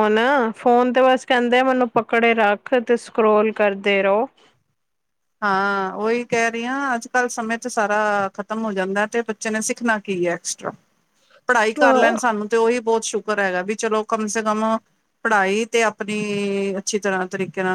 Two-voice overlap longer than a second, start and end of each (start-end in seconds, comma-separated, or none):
none